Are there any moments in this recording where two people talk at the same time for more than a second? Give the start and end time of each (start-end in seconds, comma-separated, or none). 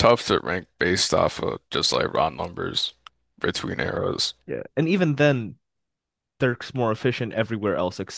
none